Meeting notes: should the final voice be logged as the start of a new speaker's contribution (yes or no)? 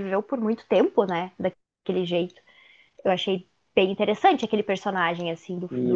yes